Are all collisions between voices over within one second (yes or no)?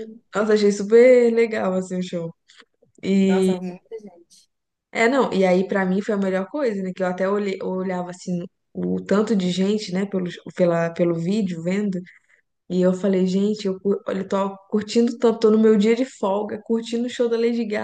yes